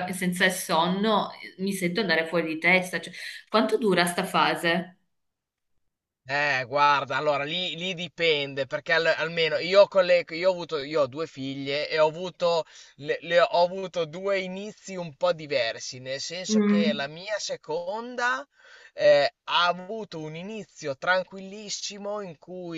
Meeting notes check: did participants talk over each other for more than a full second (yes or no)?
no